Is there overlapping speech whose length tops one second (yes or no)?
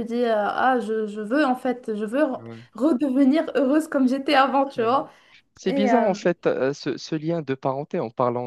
no